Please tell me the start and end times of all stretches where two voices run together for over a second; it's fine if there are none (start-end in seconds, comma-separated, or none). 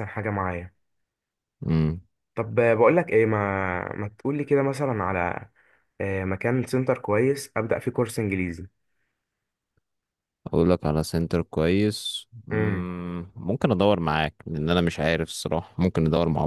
none